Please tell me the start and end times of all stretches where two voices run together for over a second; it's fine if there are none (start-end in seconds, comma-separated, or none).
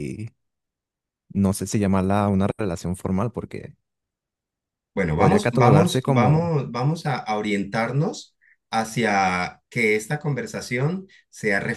5.1-6.5